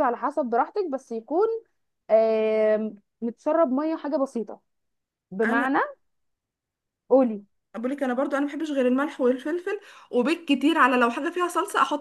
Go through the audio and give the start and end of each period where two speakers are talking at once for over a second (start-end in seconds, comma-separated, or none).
none